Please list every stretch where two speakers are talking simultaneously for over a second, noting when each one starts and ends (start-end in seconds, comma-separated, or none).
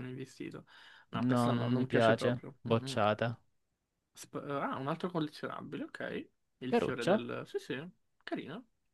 1.1-3.0